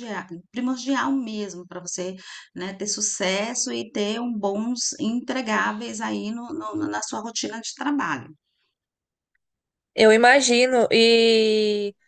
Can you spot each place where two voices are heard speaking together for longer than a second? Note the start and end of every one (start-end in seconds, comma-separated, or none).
none